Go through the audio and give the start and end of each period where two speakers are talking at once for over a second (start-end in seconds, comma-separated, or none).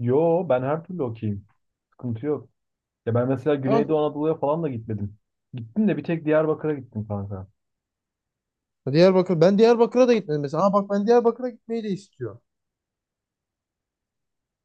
none